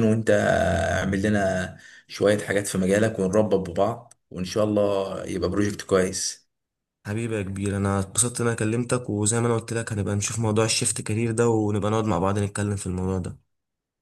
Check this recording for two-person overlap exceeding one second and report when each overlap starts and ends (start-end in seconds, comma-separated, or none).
none